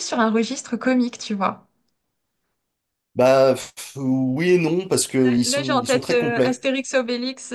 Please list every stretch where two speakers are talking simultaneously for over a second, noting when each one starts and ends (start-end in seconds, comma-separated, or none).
5.4-6.7